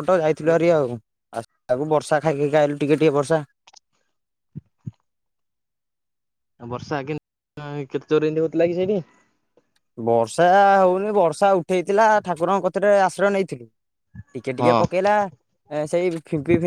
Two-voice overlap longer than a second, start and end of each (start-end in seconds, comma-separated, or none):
none